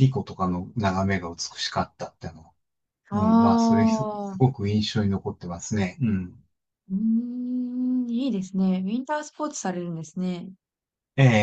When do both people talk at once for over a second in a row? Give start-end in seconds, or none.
3.1-4.4